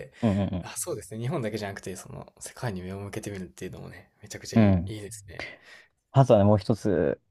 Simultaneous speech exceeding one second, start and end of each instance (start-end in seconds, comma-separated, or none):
none